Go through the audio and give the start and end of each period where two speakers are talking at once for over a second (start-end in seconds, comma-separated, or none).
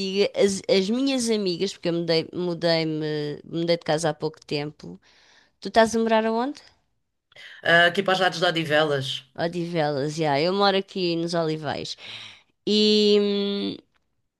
none